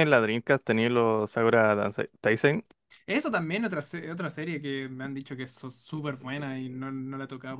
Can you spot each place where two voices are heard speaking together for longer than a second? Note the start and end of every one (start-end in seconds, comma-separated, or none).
none